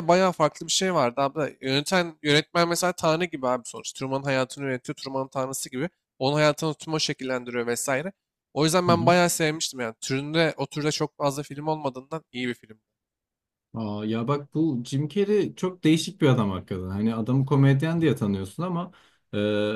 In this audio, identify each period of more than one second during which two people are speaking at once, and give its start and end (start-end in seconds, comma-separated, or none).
none